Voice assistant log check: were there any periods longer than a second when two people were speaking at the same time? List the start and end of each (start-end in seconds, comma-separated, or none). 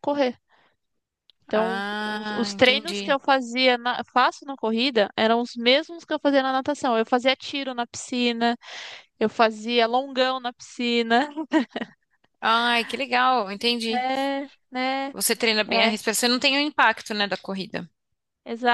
1.5-3.2